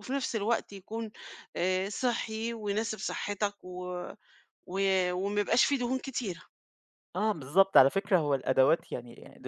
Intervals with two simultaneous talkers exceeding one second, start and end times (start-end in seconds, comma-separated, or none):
none